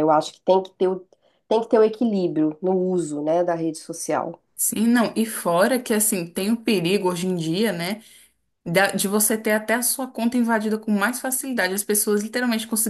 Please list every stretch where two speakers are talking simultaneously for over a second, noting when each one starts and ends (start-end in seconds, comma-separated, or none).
none